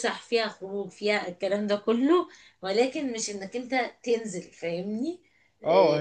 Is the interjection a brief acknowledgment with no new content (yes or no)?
no